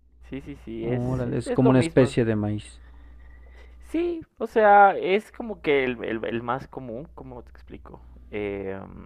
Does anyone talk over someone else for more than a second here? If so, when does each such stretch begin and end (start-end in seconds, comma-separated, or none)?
0.8-2.2